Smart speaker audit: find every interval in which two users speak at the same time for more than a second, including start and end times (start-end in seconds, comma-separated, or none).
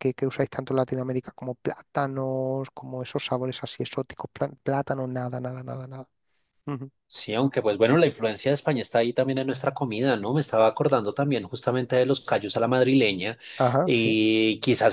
none